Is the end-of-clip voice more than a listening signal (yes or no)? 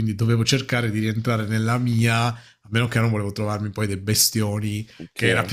no